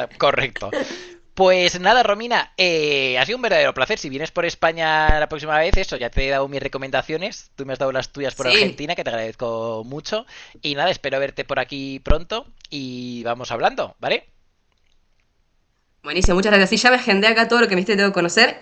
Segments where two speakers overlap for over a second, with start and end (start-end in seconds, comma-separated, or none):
none